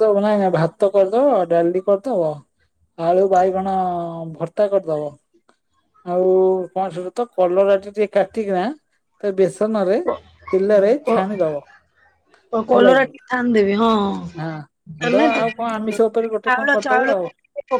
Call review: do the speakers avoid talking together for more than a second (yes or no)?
no